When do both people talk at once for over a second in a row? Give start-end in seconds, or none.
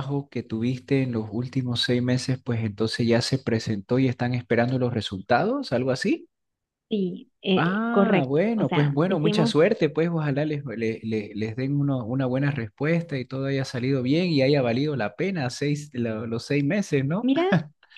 7.5-9.6